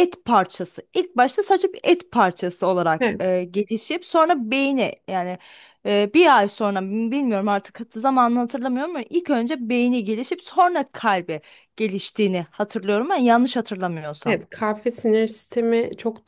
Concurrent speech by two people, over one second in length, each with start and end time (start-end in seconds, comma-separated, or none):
none